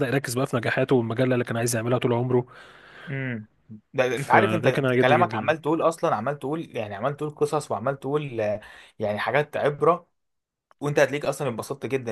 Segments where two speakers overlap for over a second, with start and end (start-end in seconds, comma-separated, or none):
4.2-5.5